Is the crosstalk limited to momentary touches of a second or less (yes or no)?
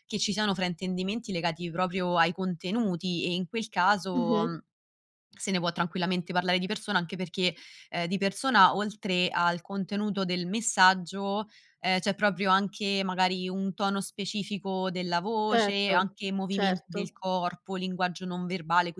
no